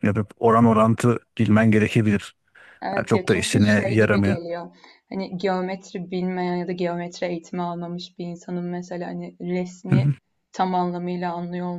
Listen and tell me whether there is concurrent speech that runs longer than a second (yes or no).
yes